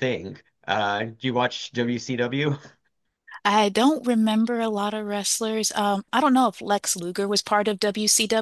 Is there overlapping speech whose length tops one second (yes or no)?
no